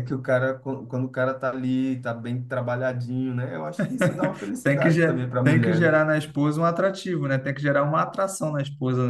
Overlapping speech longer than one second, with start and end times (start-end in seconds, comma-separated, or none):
4.6-6.0